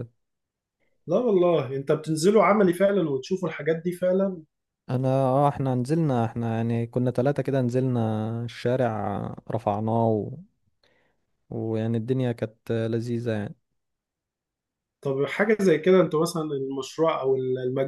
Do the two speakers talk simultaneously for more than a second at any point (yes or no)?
no